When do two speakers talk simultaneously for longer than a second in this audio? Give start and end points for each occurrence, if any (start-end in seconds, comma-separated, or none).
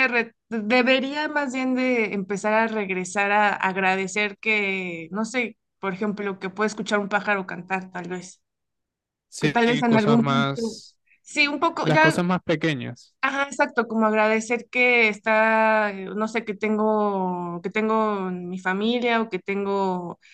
9.4-10.8